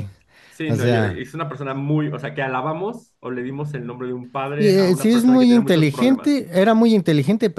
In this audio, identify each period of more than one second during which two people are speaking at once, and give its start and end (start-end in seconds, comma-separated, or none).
4.6-6.4